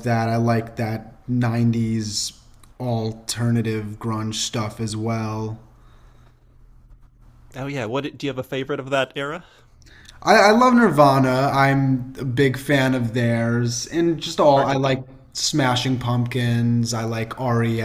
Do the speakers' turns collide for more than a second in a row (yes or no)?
no